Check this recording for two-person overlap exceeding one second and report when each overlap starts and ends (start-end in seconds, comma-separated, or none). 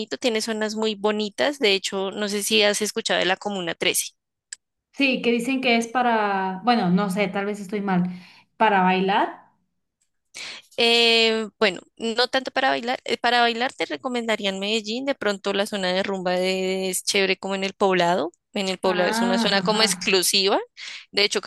18.8-20.2